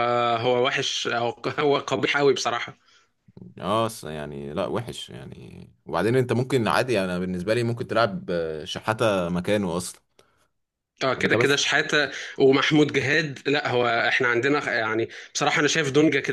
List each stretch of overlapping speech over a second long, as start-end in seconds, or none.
none